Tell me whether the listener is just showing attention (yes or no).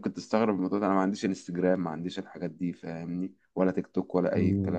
no